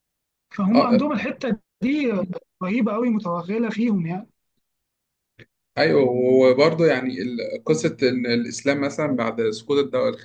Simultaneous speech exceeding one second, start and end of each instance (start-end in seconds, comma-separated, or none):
none